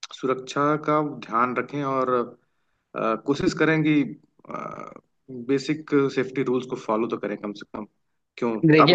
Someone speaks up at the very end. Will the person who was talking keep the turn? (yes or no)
no